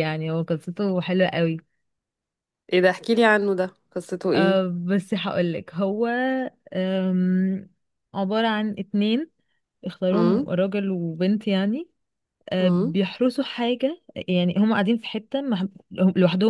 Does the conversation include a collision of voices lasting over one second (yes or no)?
no